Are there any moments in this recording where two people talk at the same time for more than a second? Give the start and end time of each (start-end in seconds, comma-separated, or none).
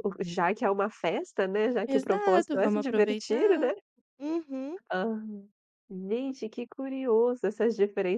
1.9-3.7